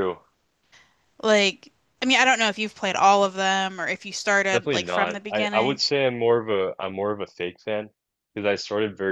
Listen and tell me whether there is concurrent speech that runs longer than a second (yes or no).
yes